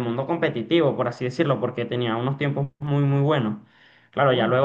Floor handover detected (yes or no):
no